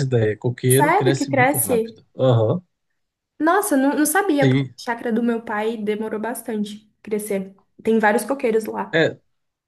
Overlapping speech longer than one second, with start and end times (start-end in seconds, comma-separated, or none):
0.7-1.9